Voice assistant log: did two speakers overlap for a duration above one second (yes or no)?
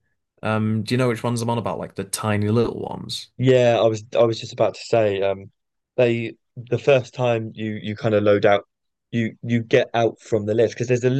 no